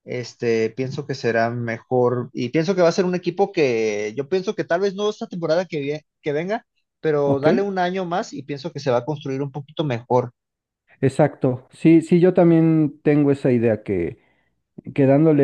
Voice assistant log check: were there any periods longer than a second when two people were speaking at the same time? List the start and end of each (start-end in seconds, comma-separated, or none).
none